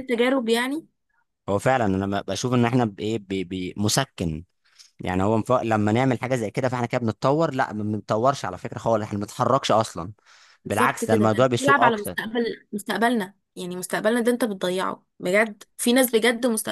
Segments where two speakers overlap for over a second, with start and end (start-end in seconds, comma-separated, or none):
10.7-12.2